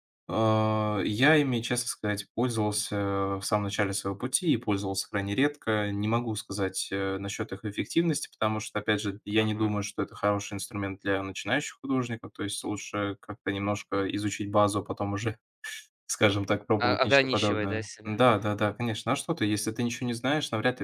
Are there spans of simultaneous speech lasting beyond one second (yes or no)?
yes